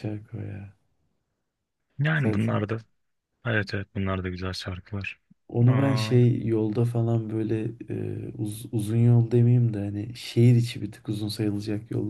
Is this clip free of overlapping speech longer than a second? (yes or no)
yes